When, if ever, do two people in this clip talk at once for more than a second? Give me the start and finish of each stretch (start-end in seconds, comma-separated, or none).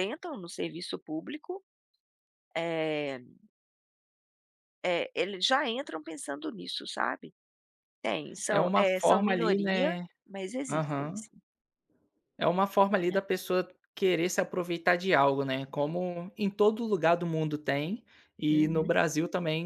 8.5-10.1